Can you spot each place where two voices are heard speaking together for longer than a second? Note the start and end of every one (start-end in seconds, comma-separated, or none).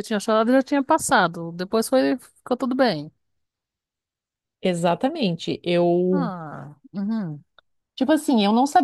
none